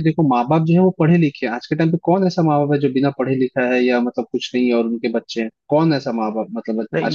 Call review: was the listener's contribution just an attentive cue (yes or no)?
no